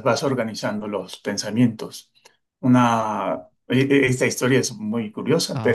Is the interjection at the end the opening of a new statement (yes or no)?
no